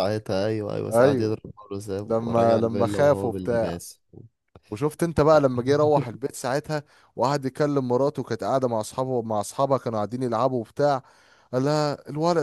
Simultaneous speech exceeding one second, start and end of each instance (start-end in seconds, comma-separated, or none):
2.1-3.3